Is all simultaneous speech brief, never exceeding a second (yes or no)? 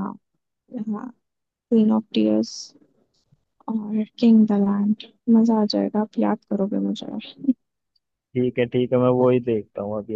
yes